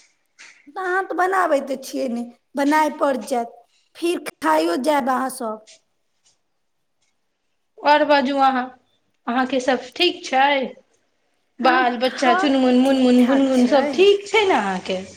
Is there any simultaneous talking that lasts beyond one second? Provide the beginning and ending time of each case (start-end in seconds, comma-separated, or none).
11.7-13.9